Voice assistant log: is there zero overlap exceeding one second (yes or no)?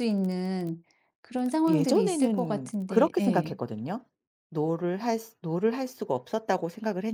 no